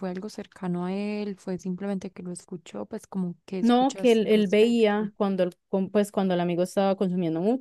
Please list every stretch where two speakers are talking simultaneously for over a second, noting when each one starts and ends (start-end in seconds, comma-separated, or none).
3.6-5.1